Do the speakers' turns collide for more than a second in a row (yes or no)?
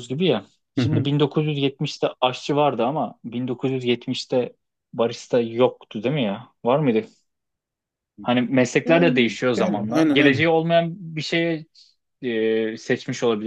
yes